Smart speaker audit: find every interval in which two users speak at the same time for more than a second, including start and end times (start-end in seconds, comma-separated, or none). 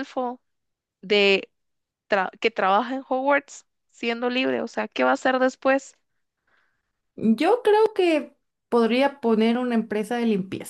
none